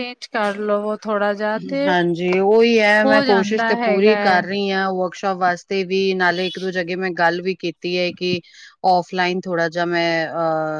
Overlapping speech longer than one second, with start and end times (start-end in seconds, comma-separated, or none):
3.0-4.4